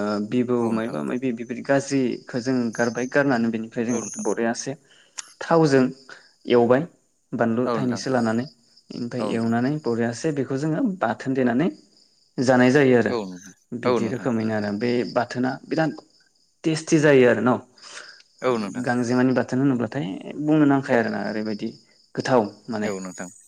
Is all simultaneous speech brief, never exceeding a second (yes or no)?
yes